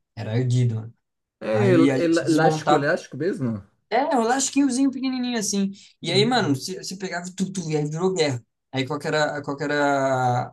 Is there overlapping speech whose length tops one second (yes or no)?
yes